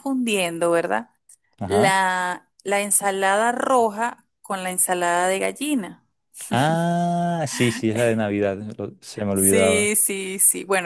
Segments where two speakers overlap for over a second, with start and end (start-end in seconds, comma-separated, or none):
none